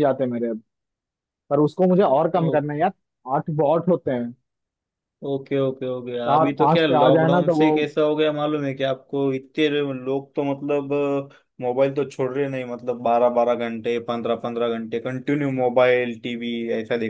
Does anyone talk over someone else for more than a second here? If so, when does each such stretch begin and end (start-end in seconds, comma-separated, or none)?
6.3-7.8